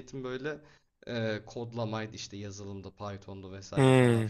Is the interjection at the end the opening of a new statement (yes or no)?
no